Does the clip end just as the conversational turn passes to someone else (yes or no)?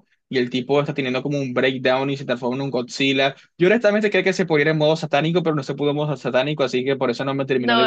yes